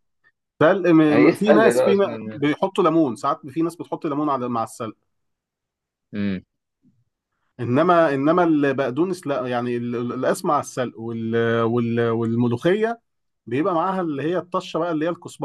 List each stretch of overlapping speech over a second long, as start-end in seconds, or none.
1.1-2.5